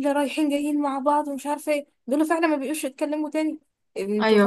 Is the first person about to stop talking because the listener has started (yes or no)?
yes